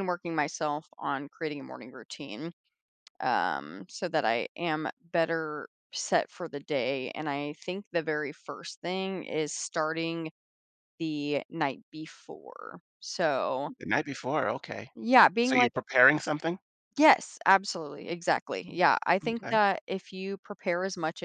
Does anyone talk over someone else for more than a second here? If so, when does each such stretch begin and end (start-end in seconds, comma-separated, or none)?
none